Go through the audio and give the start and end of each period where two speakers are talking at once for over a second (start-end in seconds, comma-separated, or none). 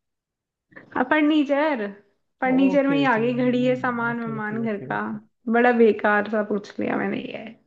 2.5-5.0